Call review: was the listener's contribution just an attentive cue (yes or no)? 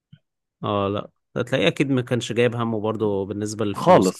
no